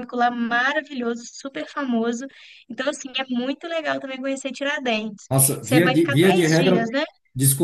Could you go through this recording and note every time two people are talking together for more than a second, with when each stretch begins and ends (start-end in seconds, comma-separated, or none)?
5.3-6.9